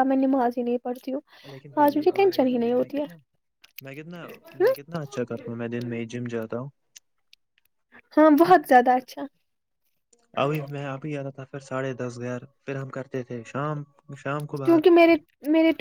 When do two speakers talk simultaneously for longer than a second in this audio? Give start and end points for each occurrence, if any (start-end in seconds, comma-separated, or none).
1.8-3.1